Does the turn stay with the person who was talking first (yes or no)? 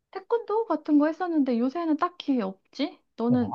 no